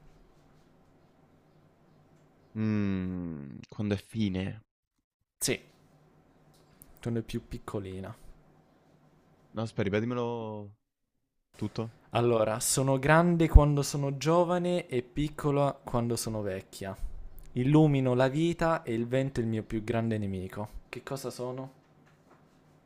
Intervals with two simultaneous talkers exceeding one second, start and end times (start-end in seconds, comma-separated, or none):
none